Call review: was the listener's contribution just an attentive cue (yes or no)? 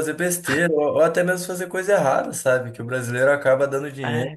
yes